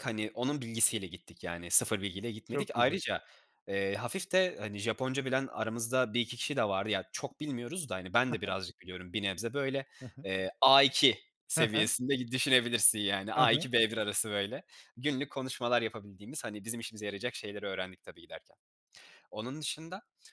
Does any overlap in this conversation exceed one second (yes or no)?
no